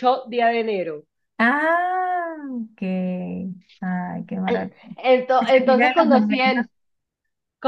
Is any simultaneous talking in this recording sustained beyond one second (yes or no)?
yes